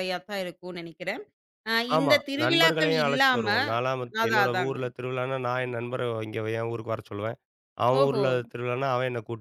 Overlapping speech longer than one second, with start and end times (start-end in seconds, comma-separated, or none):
2.0-3.5